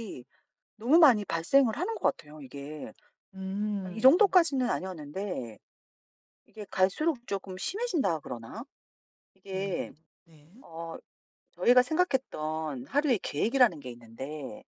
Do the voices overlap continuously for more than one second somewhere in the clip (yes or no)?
no